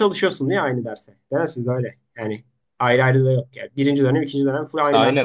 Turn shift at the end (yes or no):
yes